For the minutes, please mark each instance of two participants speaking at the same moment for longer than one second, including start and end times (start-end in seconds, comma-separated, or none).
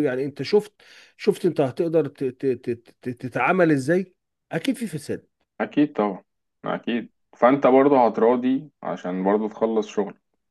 none